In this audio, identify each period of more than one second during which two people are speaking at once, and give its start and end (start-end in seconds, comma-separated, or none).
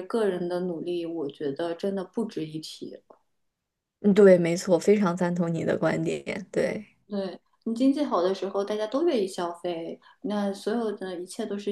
none